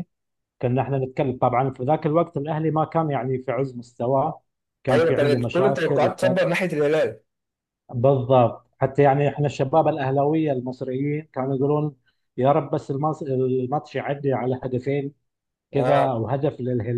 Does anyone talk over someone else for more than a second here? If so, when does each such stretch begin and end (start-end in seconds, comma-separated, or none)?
4.9-6.4